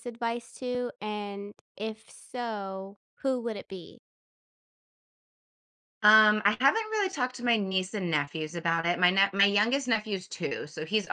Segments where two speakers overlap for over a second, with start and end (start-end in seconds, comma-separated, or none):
none